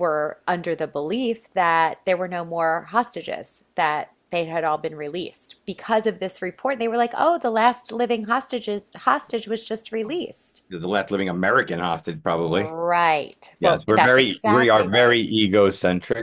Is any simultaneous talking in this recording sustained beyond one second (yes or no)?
yes